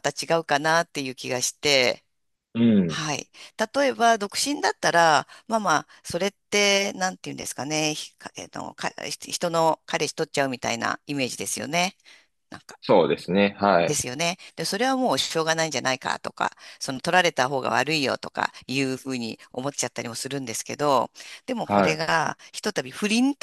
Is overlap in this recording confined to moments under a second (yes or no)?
yes